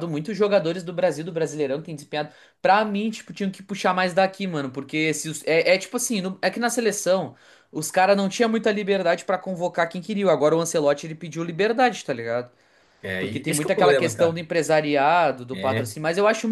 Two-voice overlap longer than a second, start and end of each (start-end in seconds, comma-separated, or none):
13.2-14.4